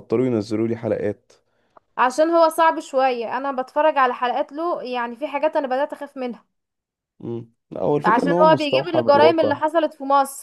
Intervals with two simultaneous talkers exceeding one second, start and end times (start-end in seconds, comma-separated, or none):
8.0-9.5